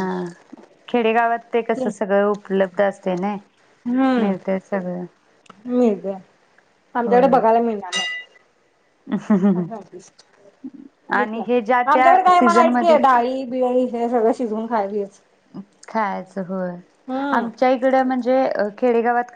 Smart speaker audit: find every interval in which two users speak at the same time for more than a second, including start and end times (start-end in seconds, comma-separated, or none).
11.2-13.0